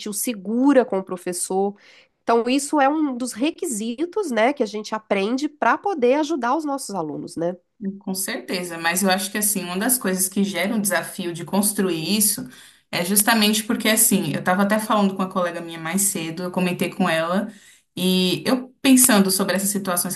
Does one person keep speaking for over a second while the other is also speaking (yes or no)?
no